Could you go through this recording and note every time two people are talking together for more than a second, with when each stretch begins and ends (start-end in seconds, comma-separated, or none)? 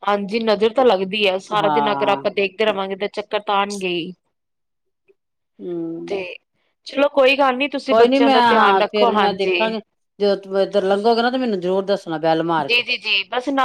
7.9-9.6